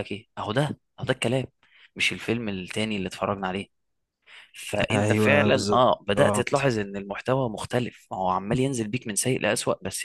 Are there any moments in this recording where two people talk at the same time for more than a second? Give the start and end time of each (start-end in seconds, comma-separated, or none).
4.9-6.7